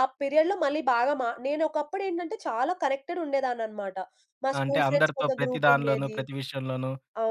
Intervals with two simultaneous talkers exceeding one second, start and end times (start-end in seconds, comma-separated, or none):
4.6-6.2